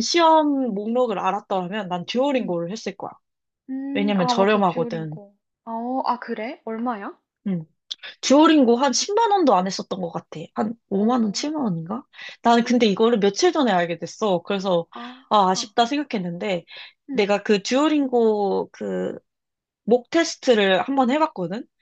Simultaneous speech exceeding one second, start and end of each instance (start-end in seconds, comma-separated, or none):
3.9-5.2